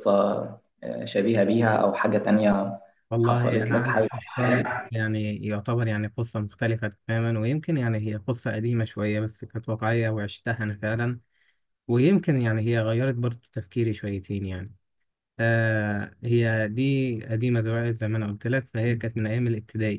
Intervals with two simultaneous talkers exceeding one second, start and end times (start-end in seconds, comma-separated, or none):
3.2-4.9